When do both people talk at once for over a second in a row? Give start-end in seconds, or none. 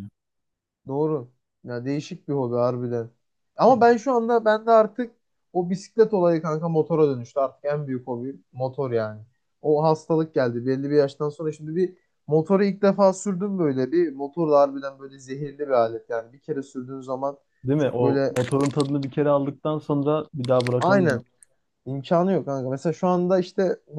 none